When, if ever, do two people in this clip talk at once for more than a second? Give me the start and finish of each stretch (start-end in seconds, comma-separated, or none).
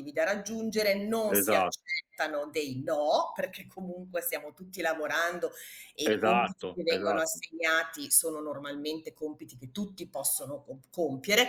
6.0-7.4